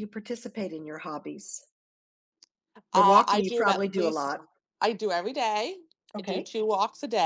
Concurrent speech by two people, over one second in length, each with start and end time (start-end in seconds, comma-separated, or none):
2.9-4.4